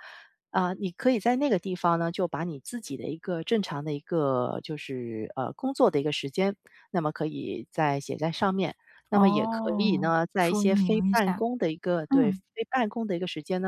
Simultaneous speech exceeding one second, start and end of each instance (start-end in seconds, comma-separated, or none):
9.1-11.4